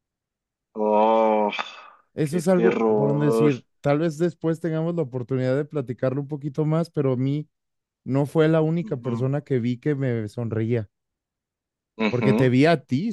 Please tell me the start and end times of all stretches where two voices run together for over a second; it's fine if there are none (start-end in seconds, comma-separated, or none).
2.2-3.5